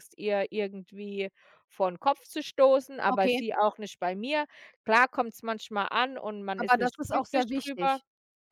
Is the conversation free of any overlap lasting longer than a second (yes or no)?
no